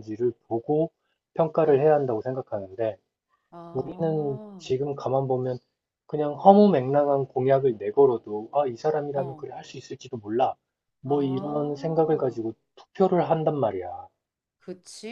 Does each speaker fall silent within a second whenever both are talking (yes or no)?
no